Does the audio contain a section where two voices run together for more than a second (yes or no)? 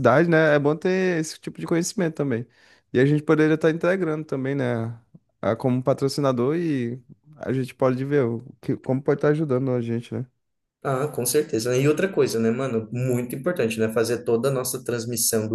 no